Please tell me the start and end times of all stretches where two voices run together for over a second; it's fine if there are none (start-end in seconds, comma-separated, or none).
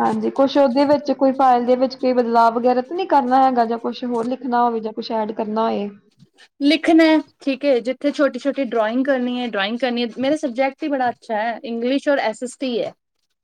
none